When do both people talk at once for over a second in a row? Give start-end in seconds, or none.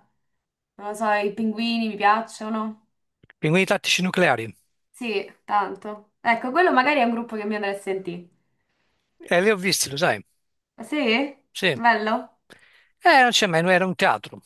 none